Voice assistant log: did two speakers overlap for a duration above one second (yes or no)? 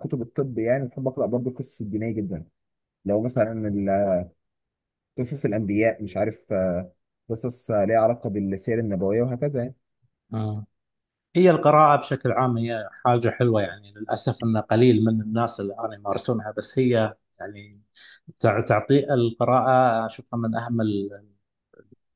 no